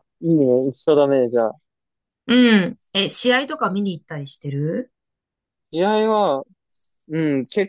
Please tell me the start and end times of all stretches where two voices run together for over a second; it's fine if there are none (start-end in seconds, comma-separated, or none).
none